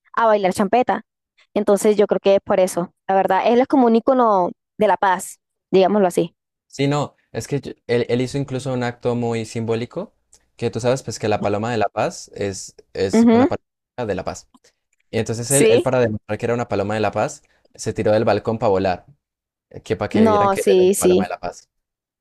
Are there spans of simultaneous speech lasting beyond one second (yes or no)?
yes